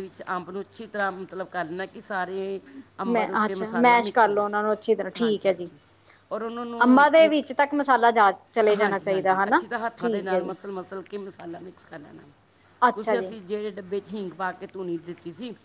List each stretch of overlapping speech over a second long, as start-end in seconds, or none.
3.1-4.5, 8.8-10.6